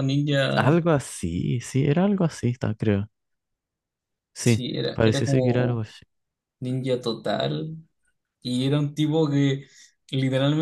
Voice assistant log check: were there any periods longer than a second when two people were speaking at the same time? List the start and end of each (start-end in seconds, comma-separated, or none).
4.4-5.9